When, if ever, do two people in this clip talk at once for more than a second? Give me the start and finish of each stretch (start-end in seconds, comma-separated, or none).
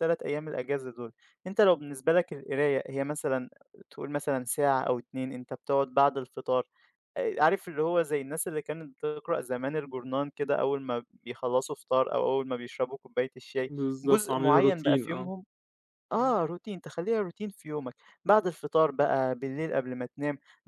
13.8-15.3